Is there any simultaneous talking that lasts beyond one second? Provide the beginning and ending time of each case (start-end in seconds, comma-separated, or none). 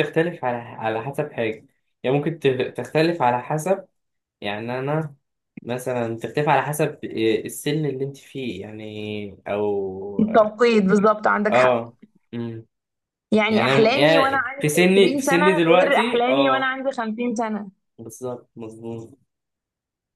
13.5-16.8